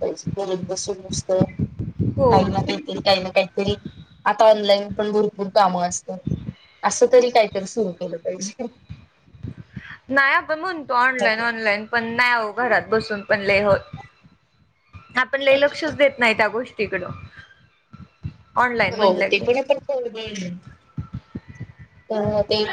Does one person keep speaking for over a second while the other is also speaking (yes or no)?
no